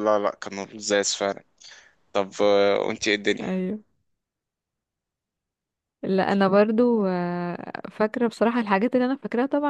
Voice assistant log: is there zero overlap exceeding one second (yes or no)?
yes